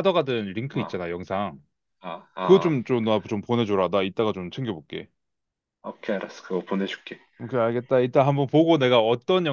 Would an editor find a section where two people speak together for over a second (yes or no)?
no